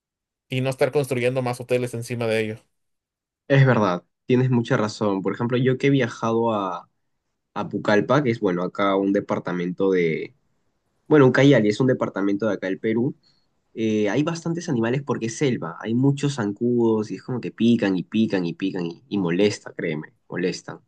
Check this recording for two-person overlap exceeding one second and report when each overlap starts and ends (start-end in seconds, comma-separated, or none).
none